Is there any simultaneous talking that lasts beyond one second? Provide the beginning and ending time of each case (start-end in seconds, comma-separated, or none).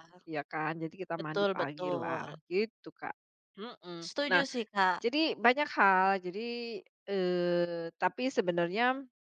1.2-2.4